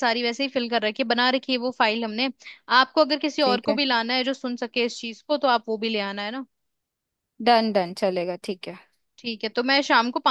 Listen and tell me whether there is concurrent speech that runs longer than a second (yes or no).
no